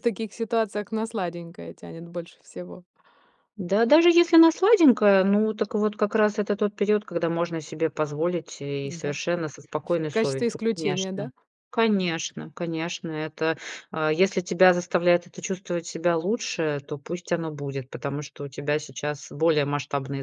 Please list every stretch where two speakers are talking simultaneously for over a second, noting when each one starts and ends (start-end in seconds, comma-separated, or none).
9.9-11.3